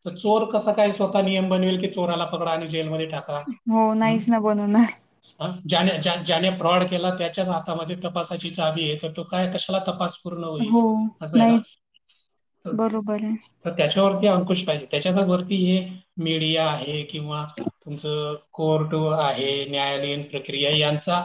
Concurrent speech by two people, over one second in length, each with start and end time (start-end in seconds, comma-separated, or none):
none